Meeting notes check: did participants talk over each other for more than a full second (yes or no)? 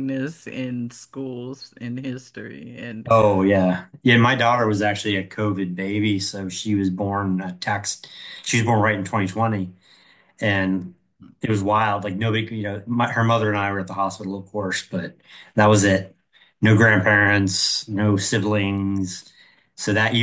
no